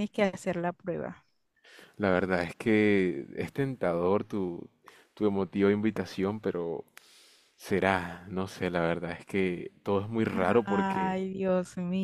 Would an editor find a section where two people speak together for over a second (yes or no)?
no